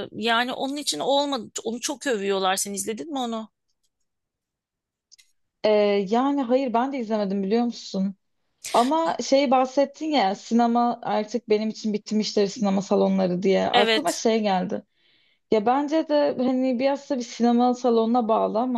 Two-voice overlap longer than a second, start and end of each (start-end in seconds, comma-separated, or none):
none